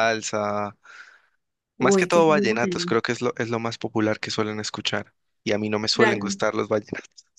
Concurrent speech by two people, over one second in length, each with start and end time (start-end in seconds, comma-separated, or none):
1.8-3.0